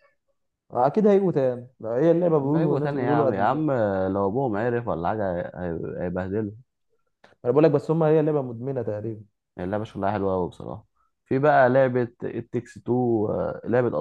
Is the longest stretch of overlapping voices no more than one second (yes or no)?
no